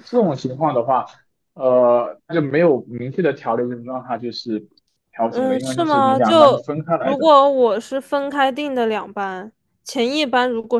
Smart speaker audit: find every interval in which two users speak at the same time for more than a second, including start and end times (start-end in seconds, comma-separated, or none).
5.3-7.3